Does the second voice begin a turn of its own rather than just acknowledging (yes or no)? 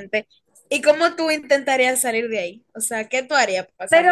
yes